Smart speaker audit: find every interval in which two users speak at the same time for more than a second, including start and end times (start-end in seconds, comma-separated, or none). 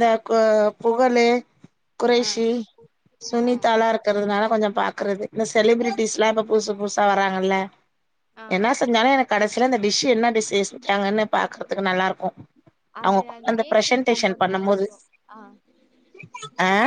13.1-14.8